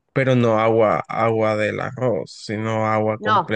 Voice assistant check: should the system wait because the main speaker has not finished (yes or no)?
no